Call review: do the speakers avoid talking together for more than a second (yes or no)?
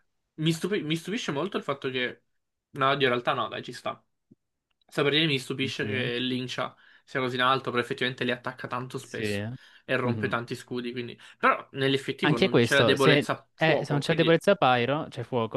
no